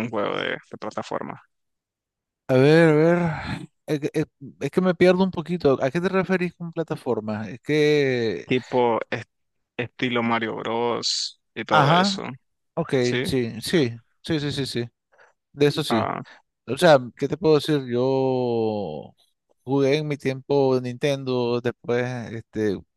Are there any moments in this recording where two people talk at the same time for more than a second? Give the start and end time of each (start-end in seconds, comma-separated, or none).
none